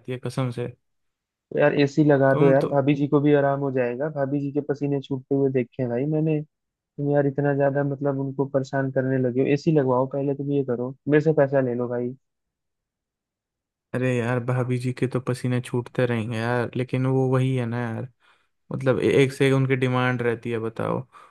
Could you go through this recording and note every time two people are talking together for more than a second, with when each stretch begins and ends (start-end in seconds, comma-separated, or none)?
none